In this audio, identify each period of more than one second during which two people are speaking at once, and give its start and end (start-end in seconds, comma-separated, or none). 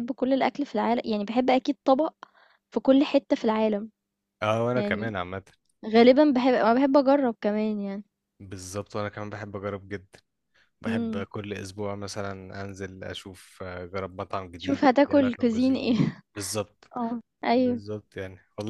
14.6-16.2